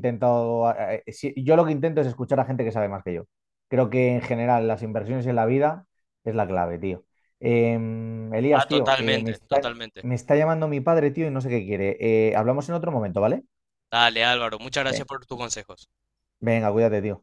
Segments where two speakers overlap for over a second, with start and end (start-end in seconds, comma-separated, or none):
8.5-10.1